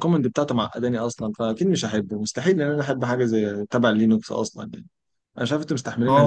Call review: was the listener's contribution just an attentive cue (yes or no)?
no